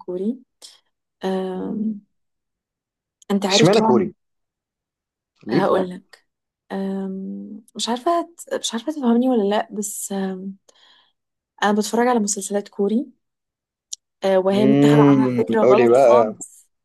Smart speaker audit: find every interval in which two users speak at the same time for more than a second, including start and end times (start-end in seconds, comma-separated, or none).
14.5-16.4